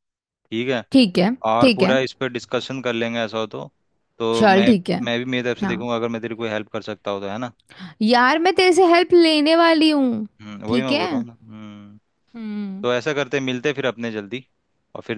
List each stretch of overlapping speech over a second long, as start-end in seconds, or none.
none